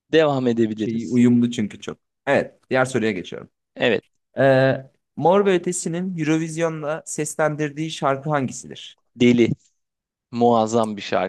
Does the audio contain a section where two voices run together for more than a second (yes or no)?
no